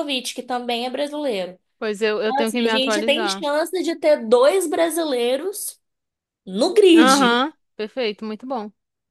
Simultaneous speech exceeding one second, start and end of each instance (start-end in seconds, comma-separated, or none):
2.2-3.5